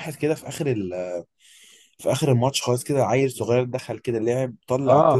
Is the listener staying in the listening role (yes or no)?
no